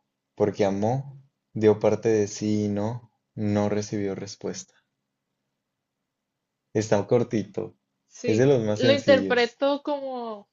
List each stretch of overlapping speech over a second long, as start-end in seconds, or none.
8.3-9.6